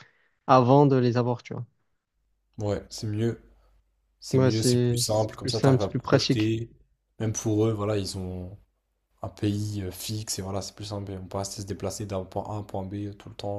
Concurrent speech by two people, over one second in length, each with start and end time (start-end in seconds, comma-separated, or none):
4.3-6.5